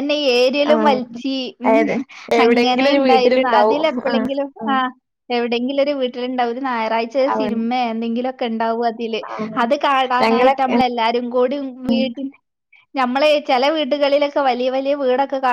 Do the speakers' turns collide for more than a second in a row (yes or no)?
yes